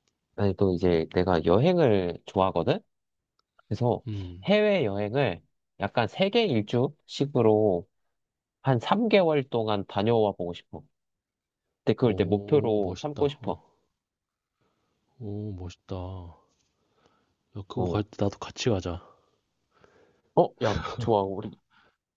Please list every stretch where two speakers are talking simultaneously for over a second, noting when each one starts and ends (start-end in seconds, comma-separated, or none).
12.0-13.6